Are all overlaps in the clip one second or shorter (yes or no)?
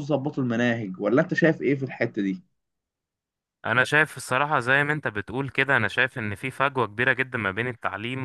yes